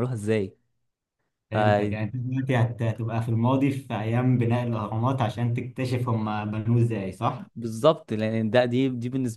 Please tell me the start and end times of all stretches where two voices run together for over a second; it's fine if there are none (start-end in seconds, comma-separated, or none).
none